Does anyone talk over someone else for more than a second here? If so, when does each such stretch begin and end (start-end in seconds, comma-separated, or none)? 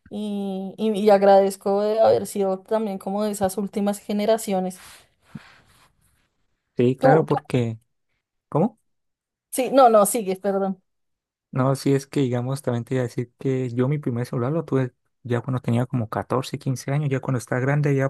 none